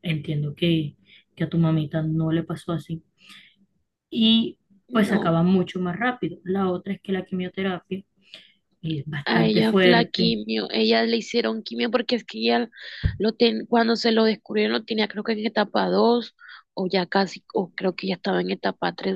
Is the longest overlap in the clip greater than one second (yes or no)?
yes